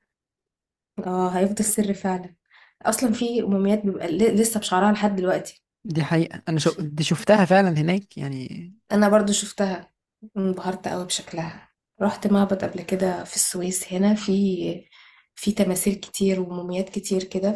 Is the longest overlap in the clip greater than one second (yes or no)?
no